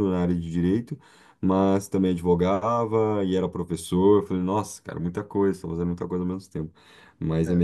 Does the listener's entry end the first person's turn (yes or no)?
no